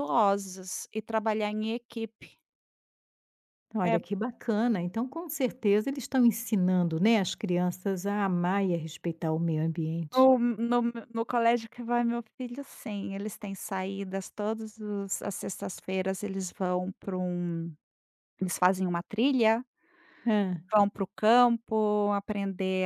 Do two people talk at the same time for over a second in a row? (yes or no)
no